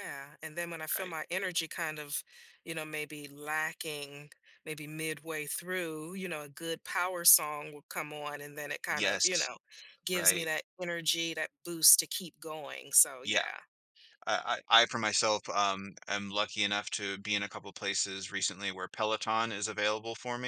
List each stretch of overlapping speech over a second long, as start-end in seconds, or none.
none